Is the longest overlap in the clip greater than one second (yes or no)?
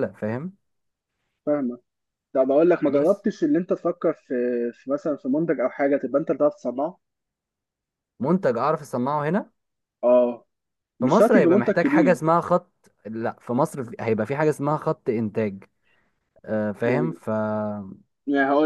yes